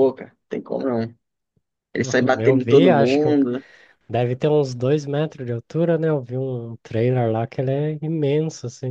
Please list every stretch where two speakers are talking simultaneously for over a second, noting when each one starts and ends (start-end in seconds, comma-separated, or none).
2.0-3.4